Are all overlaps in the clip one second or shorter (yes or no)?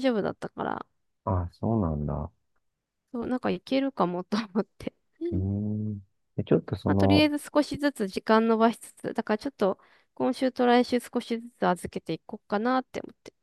yes